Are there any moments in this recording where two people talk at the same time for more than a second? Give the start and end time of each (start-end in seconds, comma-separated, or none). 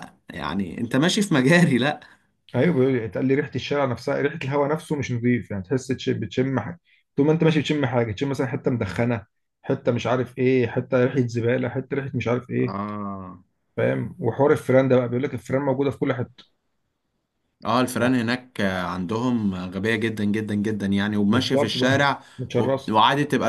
21.3-22.9